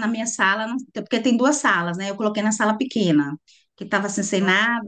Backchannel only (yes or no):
yes